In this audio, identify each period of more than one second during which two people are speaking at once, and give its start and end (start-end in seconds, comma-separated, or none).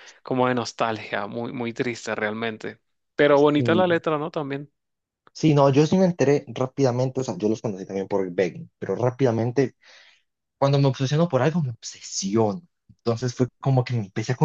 none